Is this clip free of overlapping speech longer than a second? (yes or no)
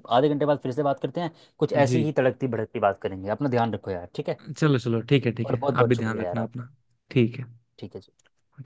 no